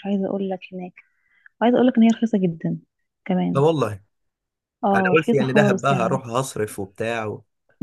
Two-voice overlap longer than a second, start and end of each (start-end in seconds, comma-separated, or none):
4.9-6.2